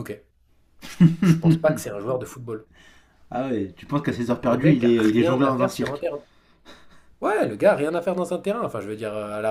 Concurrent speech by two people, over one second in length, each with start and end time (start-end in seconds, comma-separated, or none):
4.1-6.0